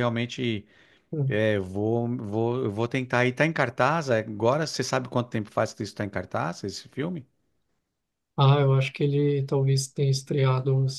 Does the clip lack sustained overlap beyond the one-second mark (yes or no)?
yes